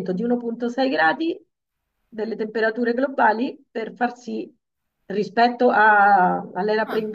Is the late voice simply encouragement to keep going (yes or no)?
yes